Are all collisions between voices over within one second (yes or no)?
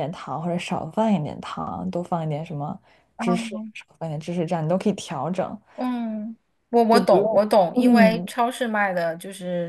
no